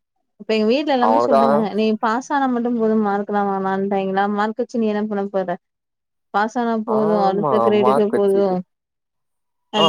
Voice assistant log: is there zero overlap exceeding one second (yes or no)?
no